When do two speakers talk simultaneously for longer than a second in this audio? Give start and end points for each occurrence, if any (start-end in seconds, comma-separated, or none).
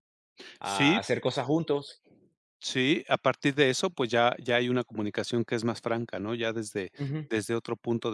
none